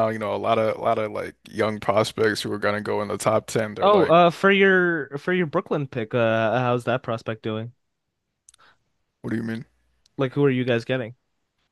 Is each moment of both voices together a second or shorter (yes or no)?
yes